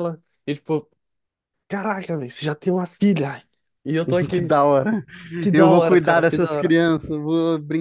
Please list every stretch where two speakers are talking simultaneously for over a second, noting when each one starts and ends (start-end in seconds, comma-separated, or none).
5.5-6.8